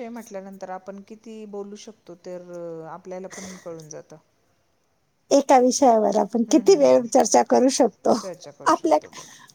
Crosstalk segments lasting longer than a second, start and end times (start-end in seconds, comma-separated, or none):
none